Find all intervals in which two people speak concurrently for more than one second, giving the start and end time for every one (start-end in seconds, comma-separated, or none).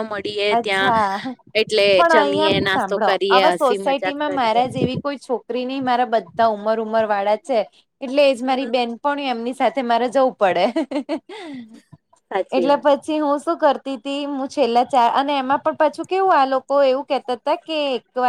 2.1-4.6